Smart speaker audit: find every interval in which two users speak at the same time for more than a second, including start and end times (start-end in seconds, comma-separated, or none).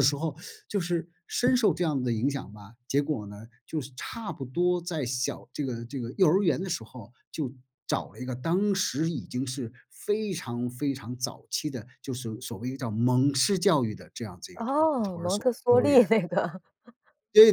14.6-16.0